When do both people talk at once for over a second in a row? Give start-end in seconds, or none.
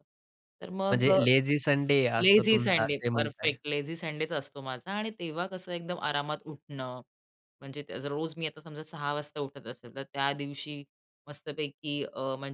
2.2-3.6